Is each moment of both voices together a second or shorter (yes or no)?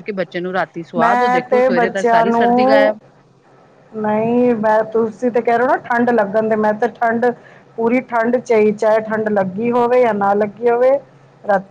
no